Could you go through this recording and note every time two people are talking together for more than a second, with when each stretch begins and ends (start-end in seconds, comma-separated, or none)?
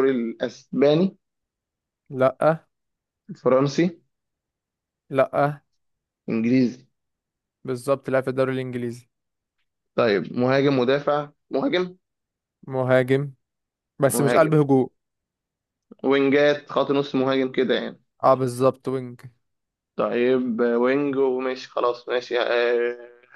none